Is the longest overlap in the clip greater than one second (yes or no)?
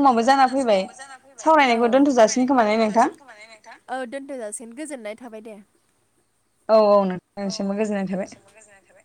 no